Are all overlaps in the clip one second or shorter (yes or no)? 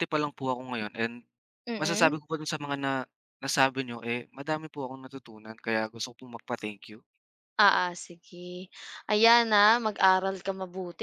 yes